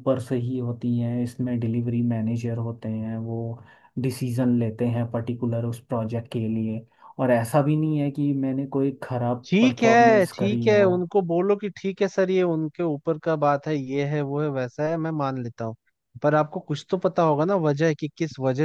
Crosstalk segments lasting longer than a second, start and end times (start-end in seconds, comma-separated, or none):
9.5-10.9